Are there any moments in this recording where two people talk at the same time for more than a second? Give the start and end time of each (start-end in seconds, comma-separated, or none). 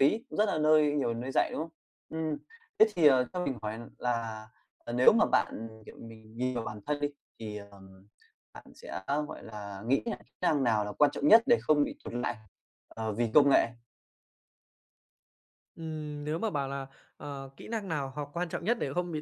none